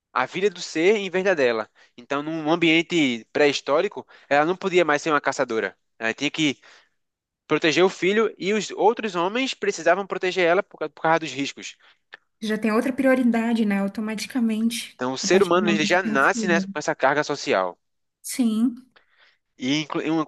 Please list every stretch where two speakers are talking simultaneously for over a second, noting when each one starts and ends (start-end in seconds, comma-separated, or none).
14.9-16.7